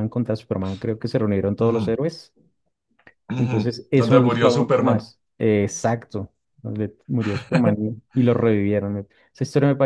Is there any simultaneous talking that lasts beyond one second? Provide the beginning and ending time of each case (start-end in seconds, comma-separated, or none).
3.4-5.0